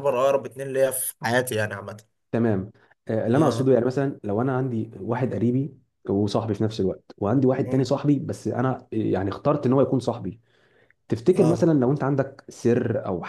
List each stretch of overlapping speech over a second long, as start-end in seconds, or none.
none